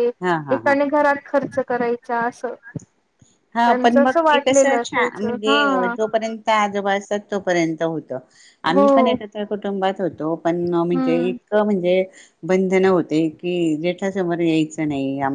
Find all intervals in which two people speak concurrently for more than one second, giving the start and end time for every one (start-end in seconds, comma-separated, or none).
3.6-5.5